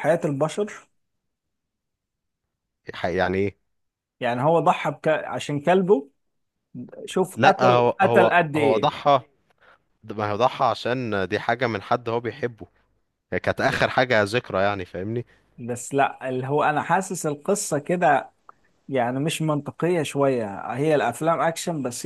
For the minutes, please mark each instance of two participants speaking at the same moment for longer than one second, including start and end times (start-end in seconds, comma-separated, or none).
7.4-8.9